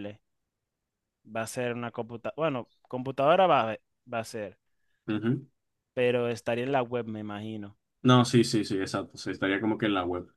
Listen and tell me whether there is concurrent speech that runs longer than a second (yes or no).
no